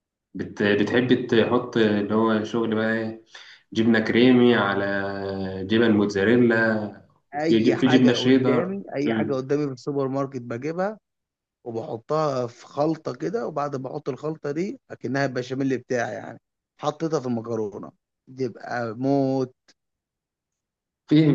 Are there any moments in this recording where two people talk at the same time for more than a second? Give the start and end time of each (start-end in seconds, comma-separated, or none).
7.3-9.4